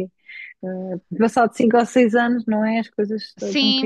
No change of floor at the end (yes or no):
no